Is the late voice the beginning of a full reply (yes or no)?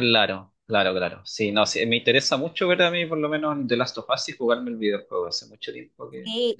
yes